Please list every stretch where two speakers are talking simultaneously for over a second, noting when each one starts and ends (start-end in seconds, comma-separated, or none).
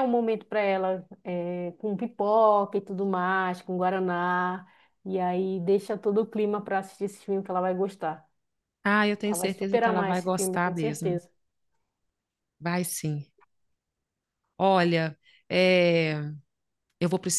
9.2-11.2